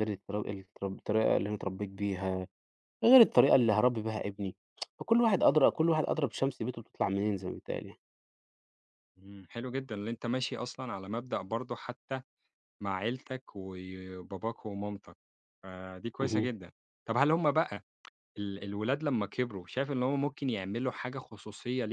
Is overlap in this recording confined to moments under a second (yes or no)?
yes